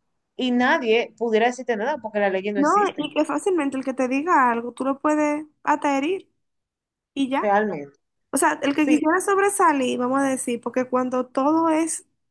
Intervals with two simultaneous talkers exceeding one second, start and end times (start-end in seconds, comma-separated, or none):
none